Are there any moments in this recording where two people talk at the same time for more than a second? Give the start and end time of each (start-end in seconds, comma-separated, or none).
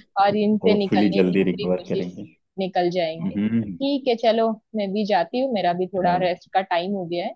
0.6-2.0